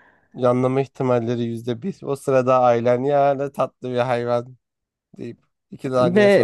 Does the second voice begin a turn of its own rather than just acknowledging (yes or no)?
yes